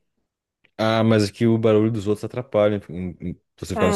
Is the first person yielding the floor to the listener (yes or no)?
yes